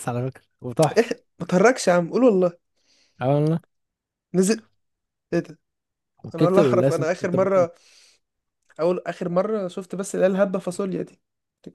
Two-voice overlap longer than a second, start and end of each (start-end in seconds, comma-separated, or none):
6.3-7.7